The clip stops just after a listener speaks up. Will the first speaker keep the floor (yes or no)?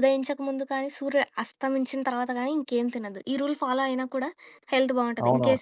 no